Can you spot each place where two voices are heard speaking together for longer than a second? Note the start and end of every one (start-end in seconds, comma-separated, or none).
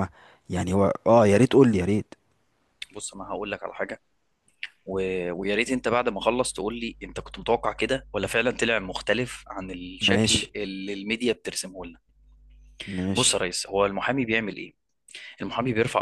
none